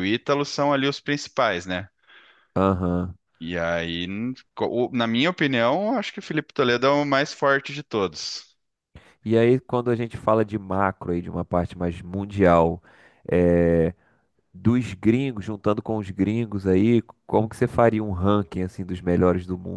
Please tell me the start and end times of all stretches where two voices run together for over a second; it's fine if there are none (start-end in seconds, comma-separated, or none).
none